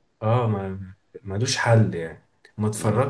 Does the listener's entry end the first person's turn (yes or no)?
no